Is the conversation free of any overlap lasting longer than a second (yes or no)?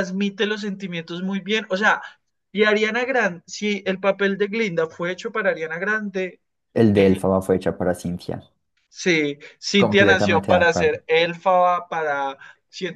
no